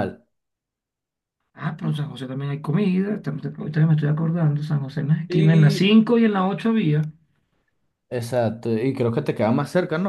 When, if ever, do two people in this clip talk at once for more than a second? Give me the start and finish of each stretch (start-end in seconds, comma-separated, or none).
none